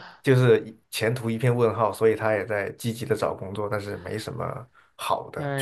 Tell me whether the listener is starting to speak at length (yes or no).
yes